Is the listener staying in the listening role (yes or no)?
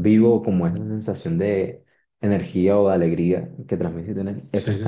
no